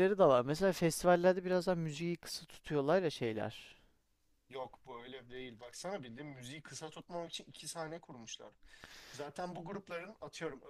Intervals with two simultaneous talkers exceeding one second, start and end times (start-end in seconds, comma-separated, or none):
none